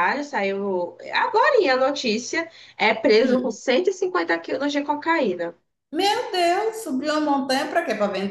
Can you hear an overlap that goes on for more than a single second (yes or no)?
no